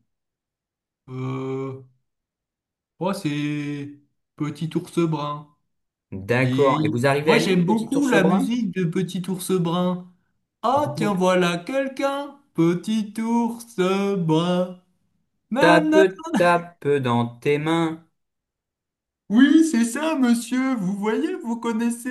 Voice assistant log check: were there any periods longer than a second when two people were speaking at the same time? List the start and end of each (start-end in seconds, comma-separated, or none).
6.4-8.6